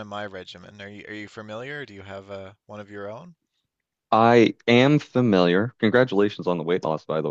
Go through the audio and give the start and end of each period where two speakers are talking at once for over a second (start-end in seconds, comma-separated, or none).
none